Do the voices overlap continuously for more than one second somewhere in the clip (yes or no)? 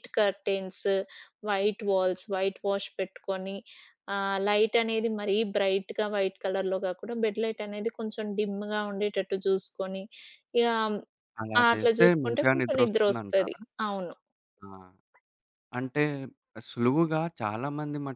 yes